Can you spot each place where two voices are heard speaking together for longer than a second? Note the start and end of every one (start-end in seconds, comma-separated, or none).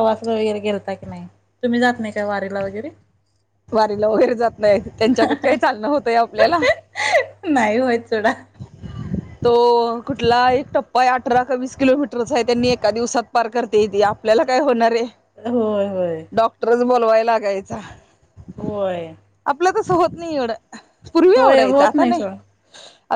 none